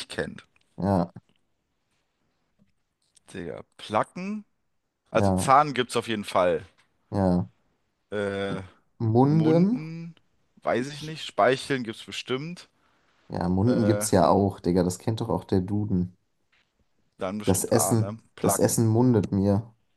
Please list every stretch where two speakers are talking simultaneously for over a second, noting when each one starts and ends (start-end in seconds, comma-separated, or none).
17.4-18.8